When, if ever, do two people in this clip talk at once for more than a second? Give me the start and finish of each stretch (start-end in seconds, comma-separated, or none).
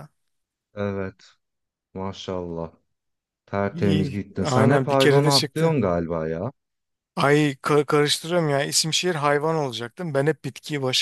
3.7-5.8